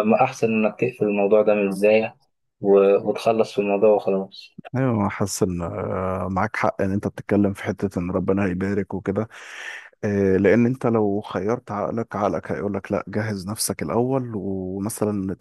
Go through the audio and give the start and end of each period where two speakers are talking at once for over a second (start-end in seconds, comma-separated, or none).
none